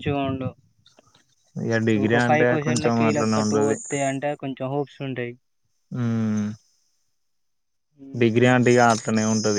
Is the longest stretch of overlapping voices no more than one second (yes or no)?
no